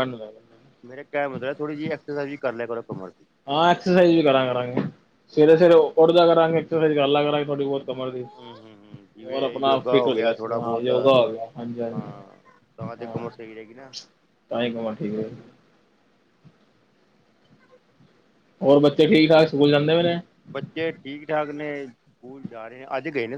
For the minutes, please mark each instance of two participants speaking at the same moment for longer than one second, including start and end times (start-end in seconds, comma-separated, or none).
9.2-10.9